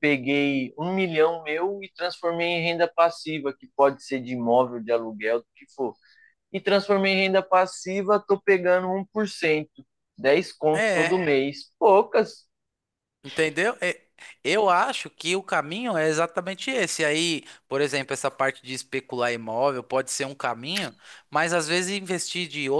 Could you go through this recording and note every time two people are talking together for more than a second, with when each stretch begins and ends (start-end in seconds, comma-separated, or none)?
none